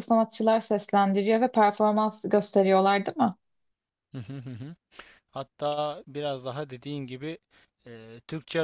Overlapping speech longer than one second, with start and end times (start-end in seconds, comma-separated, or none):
none